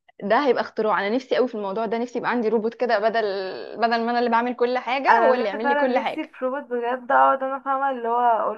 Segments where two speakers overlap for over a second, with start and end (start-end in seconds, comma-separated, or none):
5.1-6.3